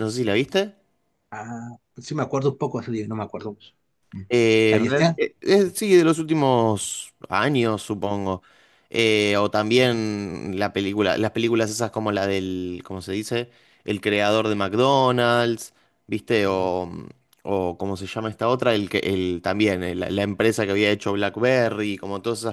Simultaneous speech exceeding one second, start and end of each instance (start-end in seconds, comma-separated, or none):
none